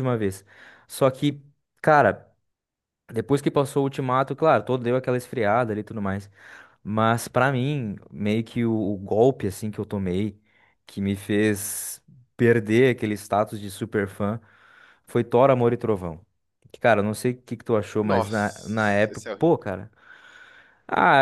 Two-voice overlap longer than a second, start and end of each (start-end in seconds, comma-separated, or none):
18.0-19.5